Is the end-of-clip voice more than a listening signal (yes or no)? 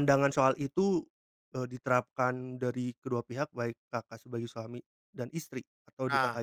yes